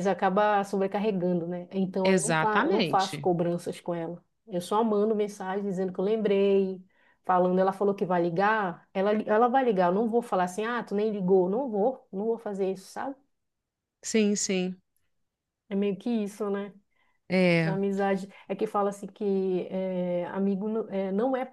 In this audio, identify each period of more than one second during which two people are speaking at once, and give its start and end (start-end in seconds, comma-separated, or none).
2.0-3.3